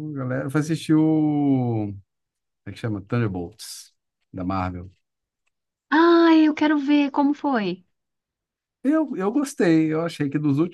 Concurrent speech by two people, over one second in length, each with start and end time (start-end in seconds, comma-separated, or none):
none